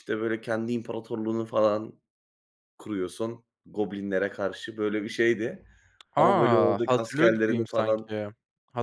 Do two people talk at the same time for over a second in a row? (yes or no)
yes